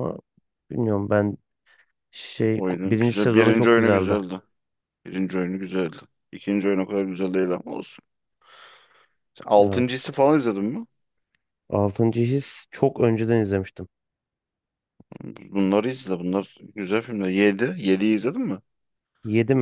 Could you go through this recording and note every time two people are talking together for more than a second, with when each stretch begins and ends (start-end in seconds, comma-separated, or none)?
2.5-4.2